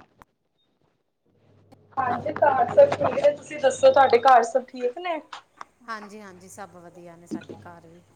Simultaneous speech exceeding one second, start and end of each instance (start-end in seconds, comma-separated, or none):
none